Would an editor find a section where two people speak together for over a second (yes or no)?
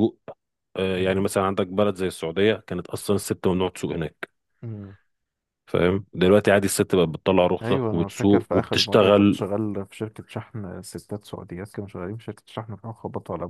yes